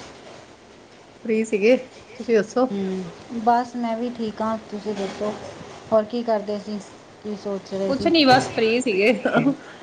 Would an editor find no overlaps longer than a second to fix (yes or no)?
yes